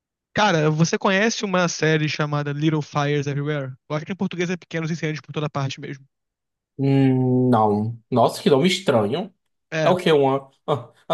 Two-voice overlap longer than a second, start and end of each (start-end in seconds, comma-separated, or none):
none